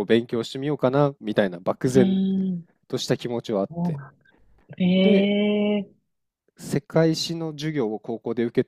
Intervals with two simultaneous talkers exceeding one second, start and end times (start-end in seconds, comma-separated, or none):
none